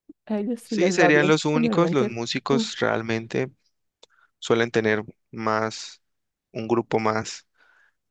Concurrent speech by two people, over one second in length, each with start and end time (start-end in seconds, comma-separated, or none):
0.6-2.6